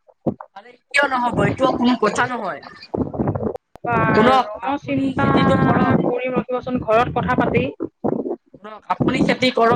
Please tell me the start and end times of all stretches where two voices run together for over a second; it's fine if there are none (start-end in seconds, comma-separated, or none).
4.1-6.0